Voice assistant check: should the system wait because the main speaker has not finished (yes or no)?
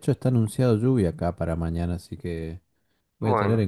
yes